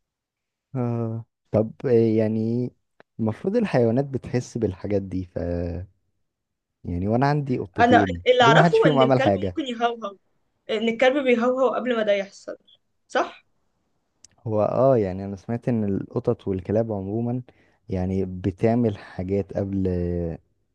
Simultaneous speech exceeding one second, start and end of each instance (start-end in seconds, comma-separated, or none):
7.8-9.6